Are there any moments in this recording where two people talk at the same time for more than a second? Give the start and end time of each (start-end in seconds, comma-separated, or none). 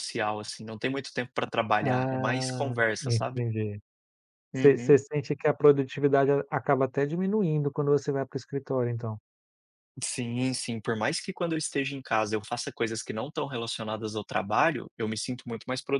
1.8-3.4